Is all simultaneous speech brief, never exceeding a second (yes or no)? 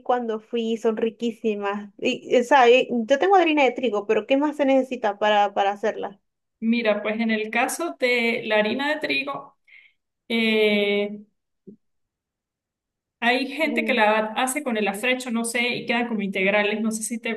yes